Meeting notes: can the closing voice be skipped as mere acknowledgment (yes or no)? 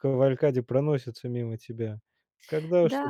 no